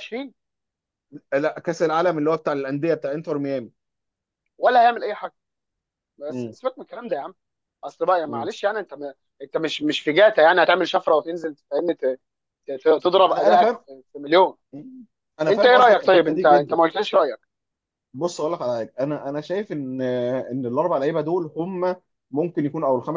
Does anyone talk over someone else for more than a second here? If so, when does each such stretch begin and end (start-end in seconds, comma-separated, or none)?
15.5-16.8